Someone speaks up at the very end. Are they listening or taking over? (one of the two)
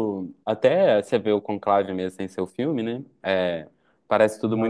listening